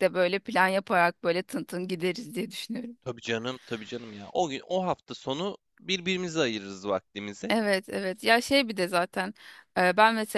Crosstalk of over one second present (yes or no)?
no